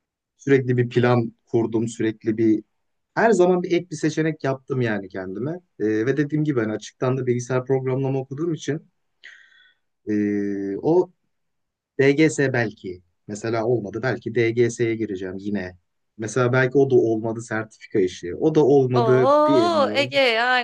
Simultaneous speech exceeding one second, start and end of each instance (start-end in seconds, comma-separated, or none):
18.9-20.1